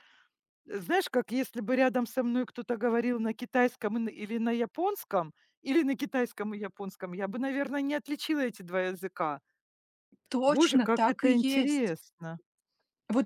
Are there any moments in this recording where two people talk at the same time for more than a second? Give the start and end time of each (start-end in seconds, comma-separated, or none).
10.5-11.9